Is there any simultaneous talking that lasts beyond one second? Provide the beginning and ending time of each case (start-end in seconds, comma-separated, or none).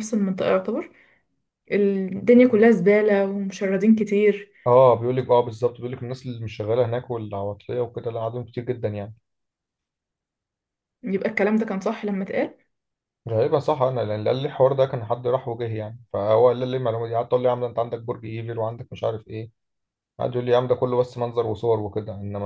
none